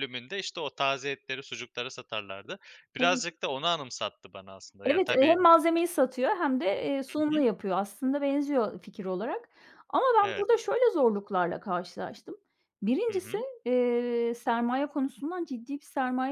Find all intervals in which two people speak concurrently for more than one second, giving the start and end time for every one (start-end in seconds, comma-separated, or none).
none